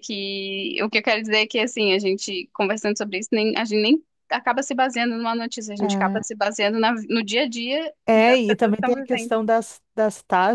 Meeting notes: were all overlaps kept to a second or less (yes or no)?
no